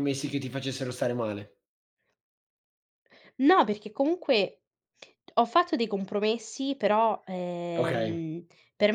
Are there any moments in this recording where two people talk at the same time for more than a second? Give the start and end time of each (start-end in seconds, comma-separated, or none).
none